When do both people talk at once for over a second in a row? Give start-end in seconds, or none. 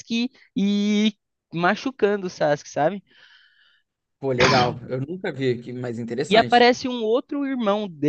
none